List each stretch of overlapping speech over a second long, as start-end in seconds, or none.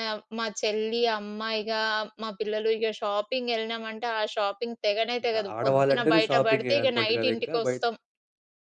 5.2-7.7